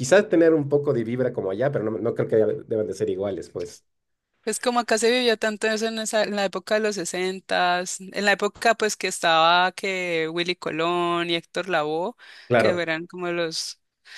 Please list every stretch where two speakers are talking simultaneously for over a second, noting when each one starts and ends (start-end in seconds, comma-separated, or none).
none